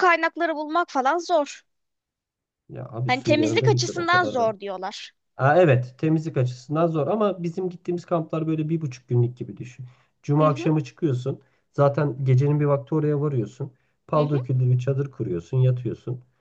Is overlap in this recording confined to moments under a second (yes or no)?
no